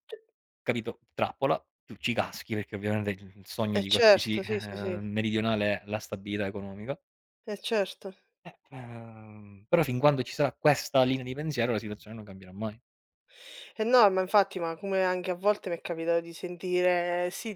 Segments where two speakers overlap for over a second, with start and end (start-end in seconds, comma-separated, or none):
3.7-5.0